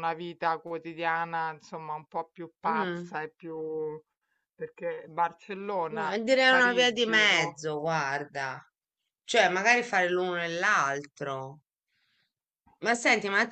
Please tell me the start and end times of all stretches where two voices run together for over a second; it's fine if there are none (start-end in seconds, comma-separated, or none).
5.9-7.6